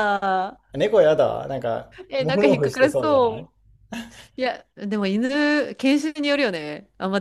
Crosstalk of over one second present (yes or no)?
yes